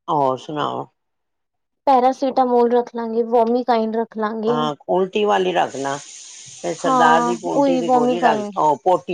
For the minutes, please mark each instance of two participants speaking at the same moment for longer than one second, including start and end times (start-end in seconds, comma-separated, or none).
6.8-8.5